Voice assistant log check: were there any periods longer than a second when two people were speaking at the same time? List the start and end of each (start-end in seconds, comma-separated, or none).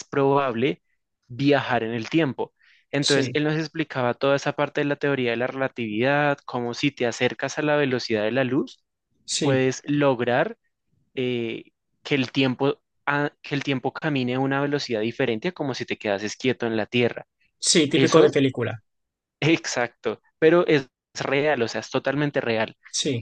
none